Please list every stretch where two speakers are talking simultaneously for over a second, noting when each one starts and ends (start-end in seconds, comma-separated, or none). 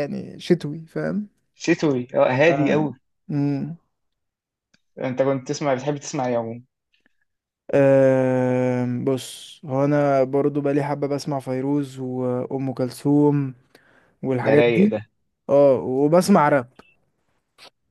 none